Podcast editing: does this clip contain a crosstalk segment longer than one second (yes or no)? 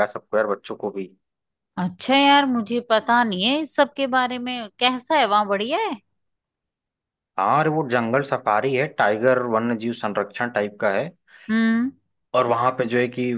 no